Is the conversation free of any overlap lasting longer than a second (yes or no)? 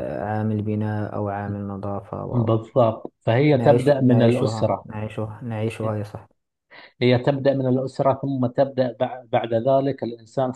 no